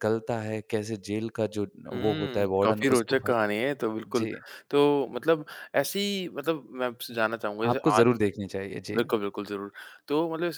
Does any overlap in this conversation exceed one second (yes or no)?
yes